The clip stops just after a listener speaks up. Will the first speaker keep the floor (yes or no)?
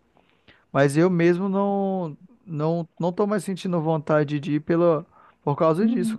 no